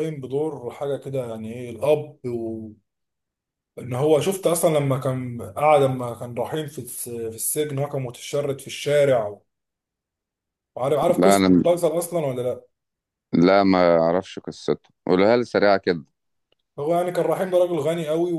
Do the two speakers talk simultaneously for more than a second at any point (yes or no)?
no